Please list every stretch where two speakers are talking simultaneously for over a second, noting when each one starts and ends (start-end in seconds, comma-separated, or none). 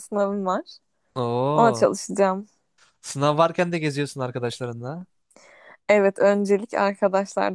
none